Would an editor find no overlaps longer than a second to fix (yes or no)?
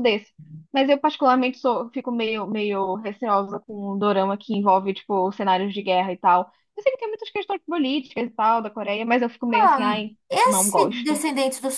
no